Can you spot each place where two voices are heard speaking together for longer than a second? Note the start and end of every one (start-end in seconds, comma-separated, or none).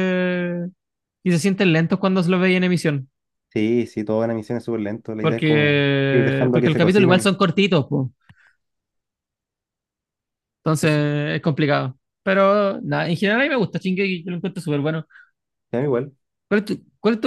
5.2-7.3